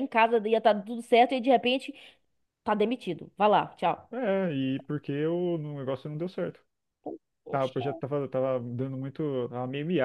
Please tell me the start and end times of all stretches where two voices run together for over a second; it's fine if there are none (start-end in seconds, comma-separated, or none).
none